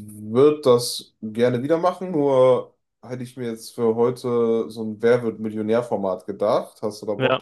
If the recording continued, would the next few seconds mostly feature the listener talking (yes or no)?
yes